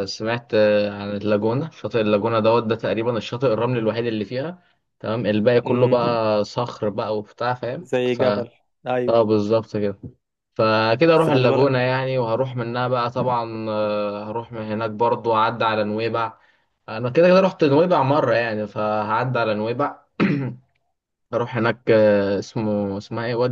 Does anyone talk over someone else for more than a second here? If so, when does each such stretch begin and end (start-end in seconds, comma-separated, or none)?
none